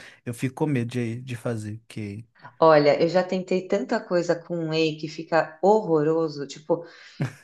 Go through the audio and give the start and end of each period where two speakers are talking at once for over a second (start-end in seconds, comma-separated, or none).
none